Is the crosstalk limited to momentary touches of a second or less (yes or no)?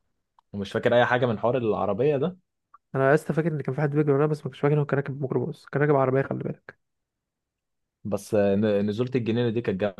yes